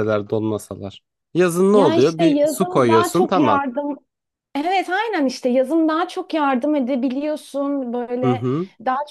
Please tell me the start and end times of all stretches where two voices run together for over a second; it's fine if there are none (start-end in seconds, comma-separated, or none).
1.7-3.6